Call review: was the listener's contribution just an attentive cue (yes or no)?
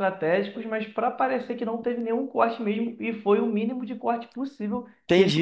no